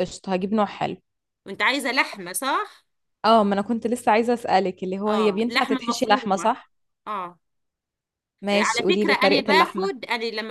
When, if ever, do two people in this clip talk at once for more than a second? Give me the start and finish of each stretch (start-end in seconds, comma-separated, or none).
5.1-6.5, 8.5-9.9